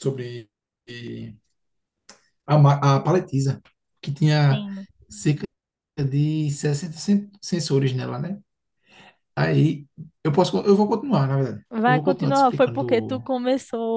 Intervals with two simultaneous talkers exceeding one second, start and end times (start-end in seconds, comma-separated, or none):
11.7-13.3